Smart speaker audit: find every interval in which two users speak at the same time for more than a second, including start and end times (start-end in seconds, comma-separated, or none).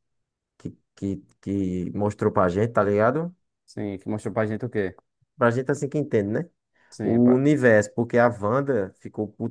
none